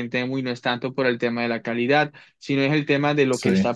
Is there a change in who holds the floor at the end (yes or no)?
no